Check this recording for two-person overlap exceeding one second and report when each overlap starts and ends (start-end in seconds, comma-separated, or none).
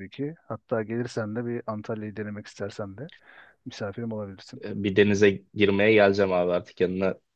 none